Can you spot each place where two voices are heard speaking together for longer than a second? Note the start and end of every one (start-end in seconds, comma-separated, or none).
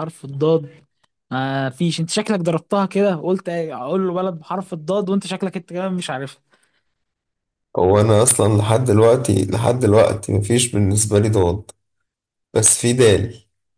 none